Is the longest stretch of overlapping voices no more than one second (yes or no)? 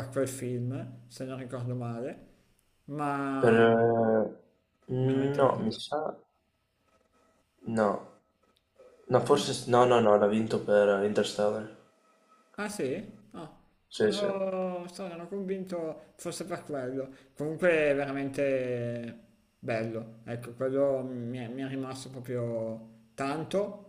yes